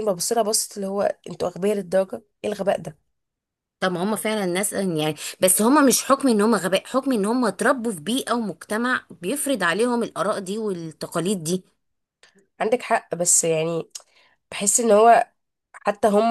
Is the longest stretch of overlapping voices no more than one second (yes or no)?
yes